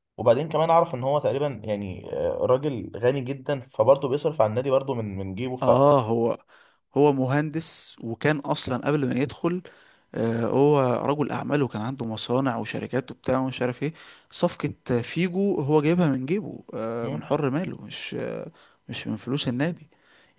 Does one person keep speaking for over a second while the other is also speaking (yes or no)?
no